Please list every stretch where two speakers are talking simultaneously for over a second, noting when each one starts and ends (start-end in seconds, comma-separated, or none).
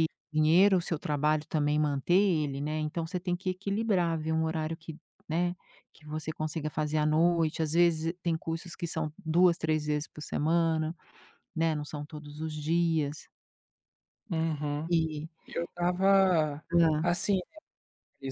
none